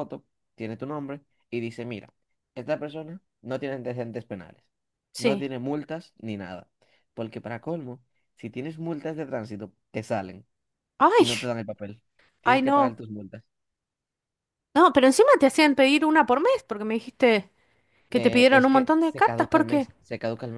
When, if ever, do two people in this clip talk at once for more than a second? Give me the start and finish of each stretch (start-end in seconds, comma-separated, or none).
18.1-19.9